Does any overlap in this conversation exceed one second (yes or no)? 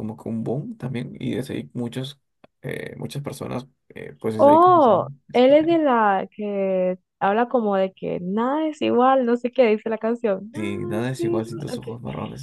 yes